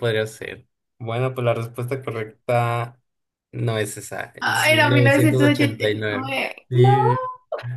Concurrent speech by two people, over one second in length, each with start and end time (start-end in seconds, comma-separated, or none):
4.4-6.9